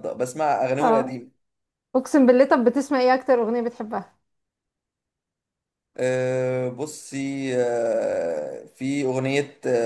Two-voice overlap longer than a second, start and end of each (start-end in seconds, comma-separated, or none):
none